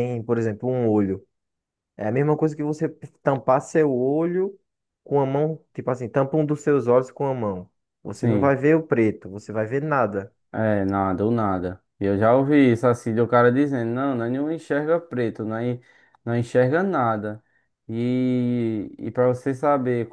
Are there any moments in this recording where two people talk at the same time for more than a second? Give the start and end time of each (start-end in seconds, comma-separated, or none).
none